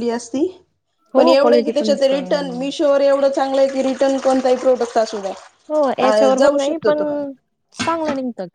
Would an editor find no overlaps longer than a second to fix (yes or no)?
no